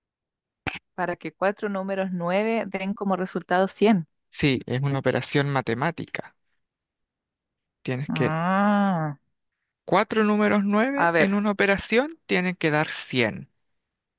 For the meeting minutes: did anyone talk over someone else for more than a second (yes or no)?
no